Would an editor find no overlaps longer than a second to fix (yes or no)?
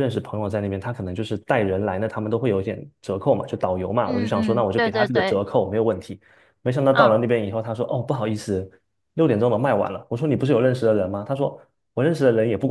no